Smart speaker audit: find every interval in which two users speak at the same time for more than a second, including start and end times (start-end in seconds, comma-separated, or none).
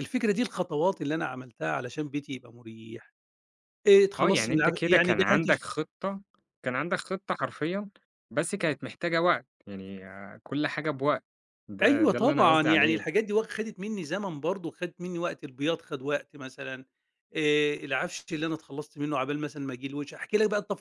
4.2-5.6, 11.8-13.0